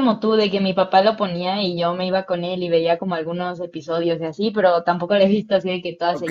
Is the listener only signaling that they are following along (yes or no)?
no